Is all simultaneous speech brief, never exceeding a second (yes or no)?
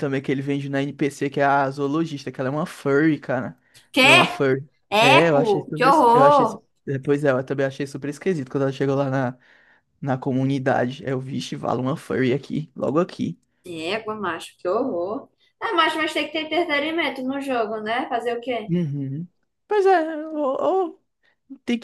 no